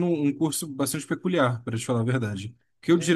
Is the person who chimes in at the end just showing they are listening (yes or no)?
yes